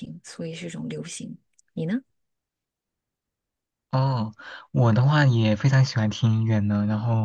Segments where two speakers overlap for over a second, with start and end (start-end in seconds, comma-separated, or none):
none